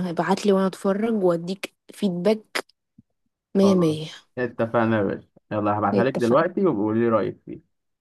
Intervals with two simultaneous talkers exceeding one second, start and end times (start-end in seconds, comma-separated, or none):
none